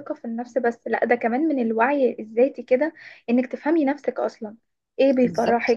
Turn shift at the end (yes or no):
no